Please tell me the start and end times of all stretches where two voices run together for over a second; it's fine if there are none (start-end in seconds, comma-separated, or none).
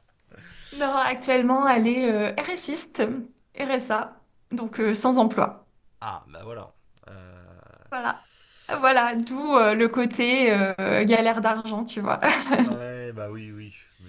none